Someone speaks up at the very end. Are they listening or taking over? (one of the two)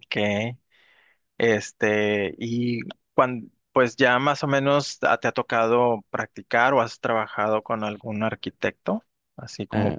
listening